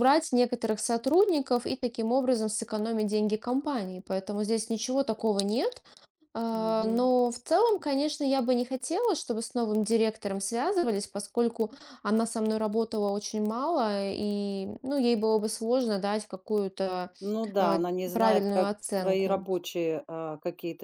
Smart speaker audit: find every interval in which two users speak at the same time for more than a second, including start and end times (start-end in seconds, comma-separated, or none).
17.6-19.5